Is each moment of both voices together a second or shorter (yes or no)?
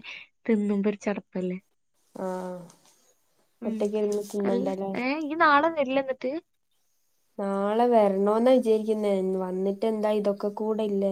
yes